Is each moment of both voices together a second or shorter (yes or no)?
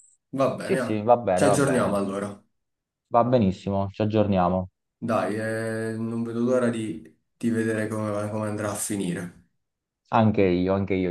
no